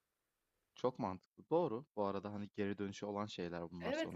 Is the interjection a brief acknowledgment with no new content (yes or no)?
no